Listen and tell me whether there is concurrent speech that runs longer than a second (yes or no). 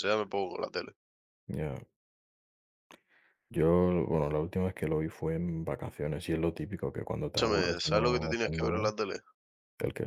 yes